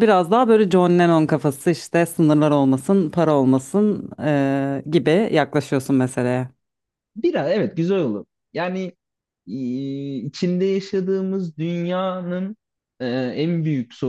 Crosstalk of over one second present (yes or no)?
no